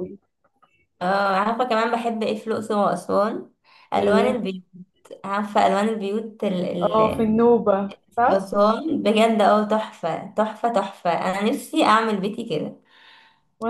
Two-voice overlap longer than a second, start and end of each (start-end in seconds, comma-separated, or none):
none